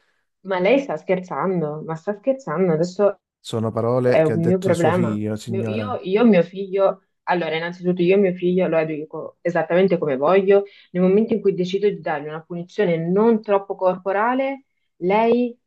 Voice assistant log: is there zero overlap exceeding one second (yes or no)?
no